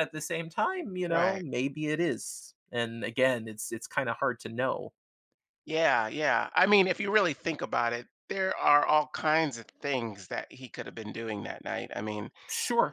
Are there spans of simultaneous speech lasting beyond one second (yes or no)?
no